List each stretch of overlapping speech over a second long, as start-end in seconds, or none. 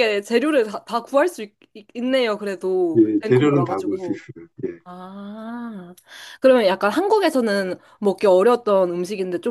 2.9-4.2